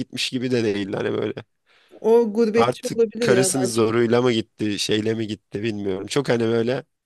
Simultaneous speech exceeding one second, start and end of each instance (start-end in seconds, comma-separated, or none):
2.5-3.8